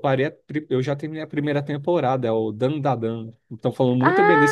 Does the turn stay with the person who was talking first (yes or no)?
no